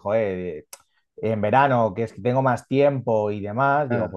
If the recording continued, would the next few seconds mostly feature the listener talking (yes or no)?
no